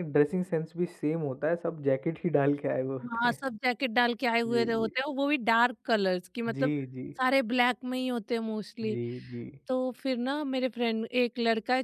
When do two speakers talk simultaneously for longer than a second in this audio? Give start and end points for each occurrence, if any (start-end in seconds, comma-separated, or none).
none